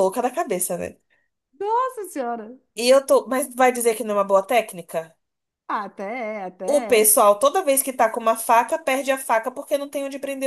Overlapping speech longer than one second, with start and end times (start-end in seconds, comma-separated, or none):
none